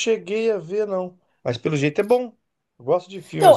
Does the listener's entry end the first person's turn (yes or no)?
yes